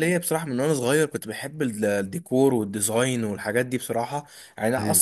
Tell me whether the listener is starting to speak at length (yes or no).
no